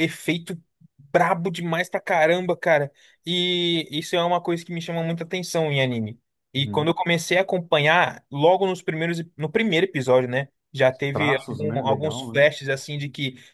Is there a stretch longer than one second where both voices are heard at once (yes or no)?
yes